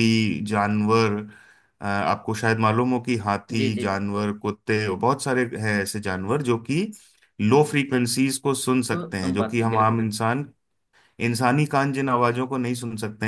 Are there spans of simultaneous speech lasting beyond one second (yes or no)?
yes